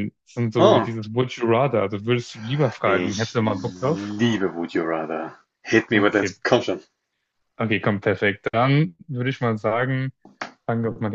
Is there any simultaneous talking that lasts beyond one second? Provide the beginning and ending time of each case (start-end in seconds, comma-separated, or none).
2.8-4.2